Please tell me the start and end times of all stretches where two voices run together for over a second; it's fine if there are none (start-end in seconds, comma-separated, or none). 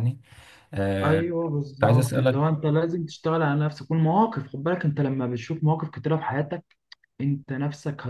1.0-2.4